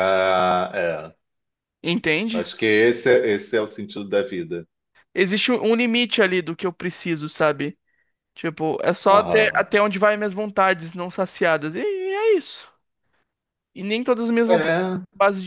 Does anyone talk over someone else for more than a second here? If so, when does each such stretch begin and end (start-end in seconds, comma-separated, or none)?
none